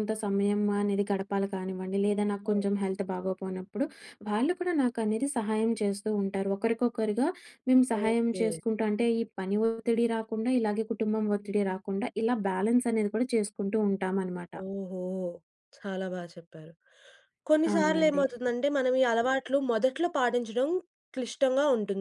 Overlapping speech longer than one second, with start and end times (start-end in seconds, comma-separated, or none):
none